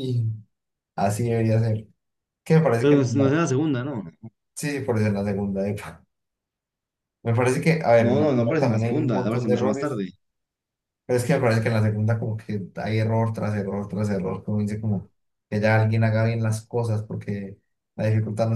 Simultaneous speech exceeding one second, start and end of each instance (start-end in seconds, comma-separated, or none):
8.0-10.0